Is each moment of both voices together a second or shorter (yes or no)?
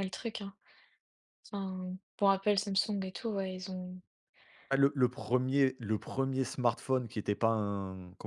yes